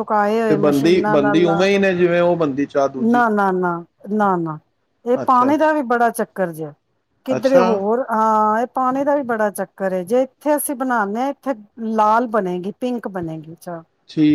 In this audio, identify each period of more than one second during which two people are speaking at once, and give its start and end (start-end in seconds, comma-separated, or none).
none